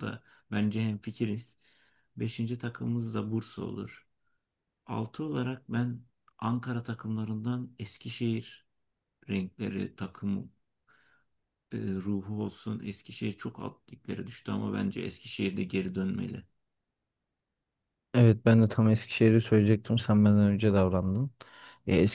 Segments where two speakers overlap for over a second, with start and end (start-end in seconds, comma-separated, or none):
none